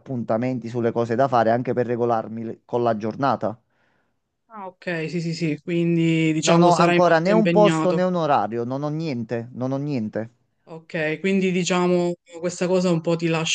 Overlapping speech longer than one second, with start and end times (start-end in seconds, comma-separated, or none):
6.4-8.1